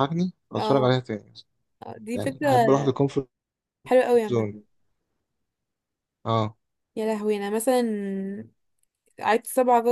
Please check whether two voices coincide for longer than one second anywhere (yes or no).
no